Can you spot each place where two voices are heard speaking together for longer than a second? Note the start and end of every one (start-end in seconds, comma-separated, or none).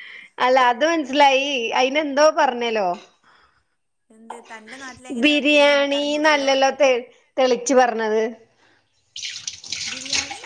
5.2-6.5